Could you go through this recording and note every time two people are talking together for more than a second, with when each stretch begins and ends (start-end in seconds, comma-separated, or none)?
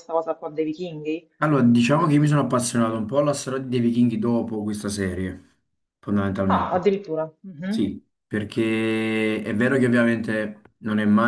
none